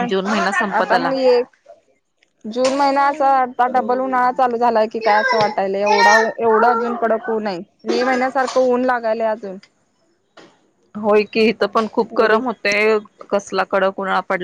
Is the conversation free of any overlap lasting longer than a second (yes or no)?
yes